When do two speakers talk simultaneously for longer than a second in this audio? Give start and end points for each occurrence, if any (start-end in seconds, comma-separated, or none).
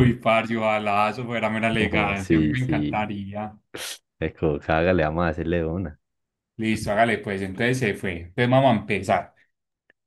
1.8-3.0